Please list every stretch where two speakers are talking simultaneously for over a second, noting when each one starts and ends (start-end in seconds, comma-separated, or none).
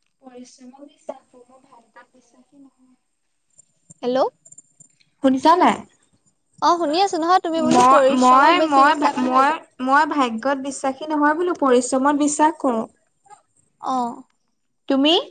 7.8-9.6